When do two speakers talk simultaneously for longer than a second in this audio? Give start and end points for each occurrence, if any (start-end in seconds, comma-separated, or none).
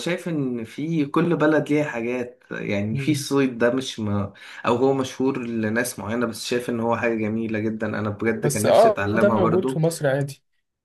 8.4-9.8